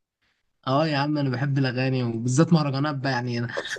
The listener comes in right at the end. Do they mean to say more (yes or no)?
no